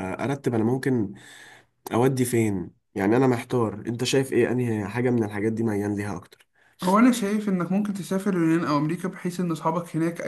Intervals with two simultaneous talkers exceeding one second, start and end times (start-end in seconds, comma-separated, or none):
none